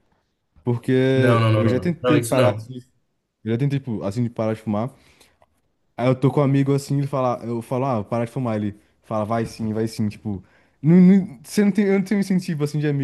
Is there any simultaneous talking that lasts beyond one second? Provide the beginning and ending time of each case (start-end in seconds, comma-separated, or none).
1.1-2.7